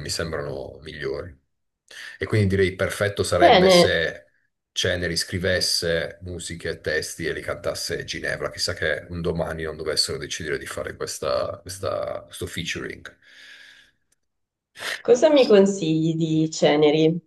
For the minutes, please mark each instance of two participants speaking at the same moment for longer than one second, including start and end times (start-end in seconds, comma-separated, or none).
none